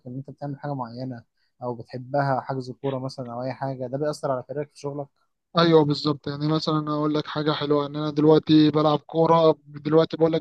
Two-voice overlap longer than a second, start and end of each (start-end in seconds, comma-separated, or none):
none